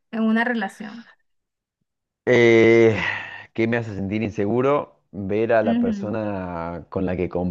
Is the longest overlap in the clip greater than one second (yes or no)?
no